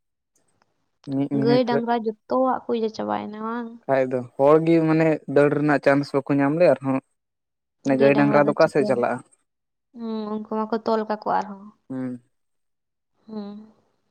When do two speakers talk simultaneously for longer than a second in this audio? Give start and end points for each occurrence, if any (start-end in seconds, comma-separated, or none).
none